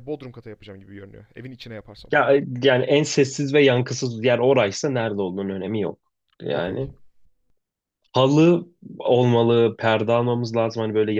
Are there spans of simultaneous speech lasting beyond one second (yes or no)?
no